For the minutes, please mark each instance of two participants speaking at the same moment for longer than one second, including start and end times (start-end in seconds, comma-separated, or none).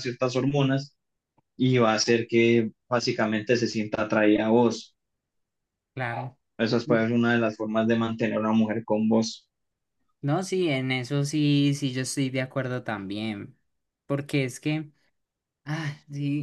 none